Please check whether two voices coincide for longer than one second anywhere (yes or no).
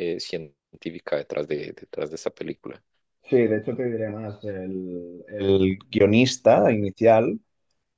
no